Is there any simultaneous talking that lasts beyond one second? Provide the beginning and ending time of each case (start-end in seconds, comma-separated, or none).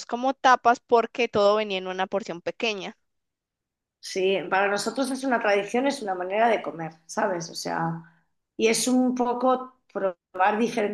none